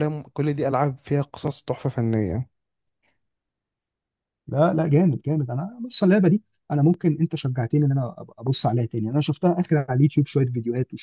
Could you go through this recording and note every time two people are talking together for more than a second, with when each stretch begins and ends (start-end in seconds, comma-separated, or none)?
none